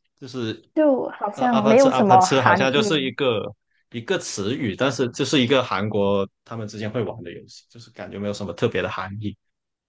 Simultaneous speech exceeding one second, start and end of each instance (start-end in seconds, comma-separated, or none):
1.3-3.1